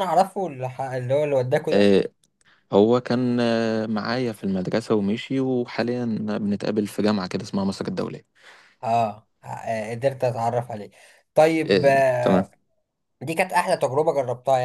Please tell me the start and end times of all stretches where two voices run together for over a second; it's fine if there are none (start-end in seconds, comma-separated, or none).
none